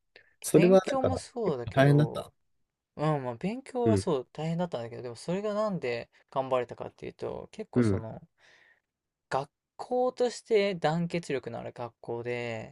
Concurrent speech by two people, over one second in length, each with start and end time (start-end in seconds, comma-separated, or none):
0.5-2.3